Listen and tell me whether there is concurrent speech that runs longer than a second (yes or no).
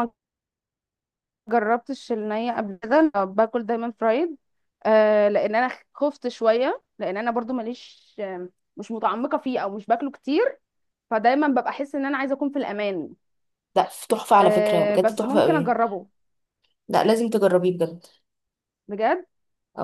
yes